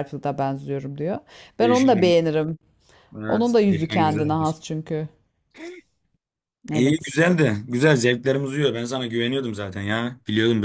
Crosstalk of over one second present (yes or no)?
yes